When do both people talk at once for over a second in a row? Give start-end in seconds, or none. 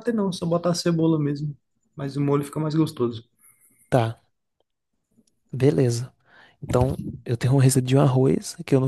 none